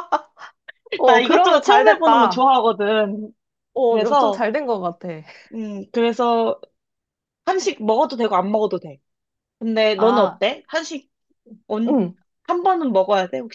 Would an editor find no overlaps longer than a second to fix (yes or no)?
no